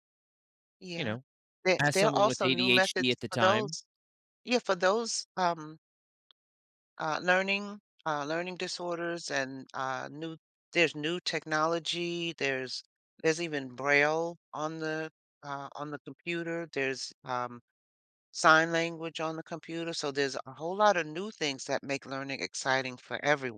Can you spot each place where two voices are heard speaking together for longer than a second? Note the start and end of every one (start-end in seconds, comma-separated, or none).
1.8-3.8